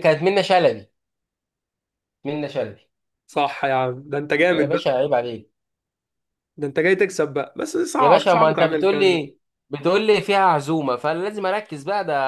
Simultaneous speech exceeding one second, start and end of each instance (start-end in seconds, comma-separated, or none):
8.0-9.2